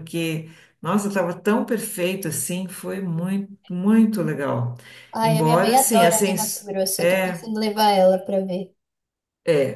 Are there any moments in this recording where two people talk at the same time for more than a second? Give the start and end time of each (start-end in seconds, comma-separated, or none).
5.2-7.5